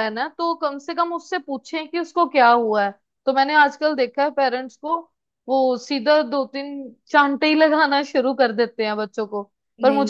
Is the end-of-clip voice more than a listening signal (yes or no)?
no